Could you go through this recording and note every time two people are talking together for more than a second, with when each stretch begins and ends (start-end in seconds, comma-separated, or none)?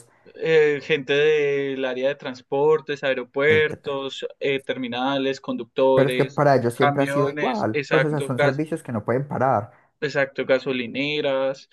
5.9-8.6